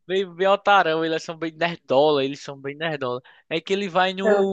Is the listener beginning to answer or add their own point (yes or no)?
no